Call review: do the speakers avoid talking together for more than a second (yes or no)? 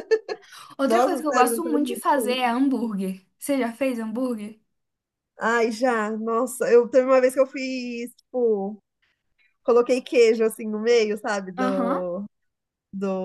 no